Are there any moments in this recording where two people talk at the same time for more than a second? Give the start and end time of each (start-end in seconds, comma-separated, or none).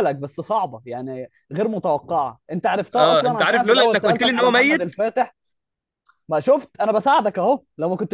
2.9-5.0